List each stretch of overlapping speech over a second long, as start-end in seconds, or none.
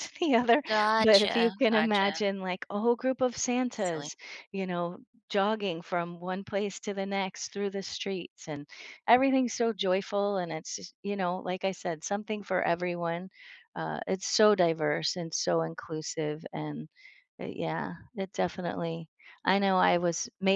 1.0-2.2